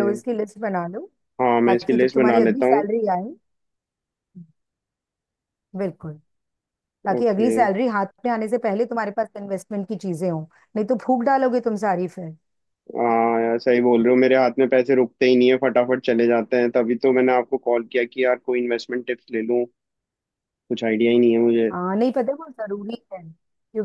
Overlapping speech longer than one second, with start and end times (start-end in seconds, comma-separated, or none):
1.6-2.9